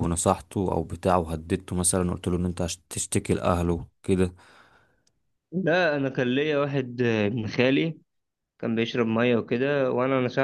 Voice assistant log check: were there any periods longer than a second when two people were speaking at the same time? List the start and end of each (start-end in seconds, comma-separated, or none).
none